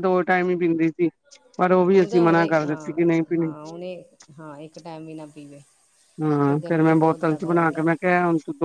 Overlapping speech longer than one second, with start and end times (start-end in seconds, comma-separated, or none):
1.9-3.5, 6.5-7.7